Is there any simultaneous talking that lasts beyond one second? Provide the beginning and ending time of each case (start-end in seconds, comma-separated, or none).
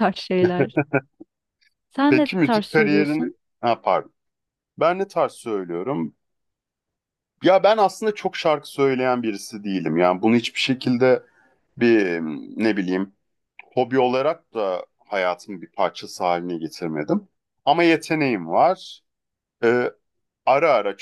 2.1-3.3